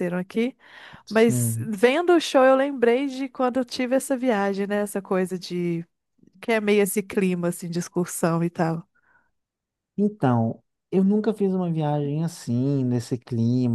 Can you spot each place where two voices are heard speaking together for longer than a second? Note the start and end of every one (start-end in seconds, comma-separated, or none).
none